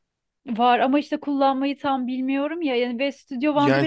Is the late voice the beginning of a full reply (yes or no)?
yes